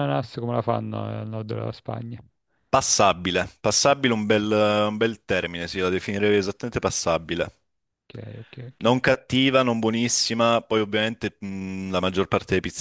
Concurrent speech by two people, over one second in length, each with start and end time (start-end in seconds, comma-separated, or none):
none